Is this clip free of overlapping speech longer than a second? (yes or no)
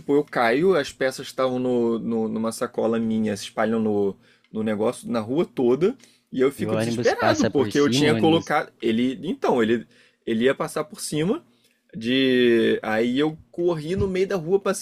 no